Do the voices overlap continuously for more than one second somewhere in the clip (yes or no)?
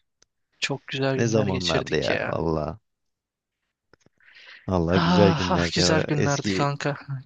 yes